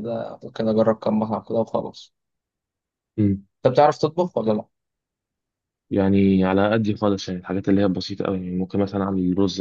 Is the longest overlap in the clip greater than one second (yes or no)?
no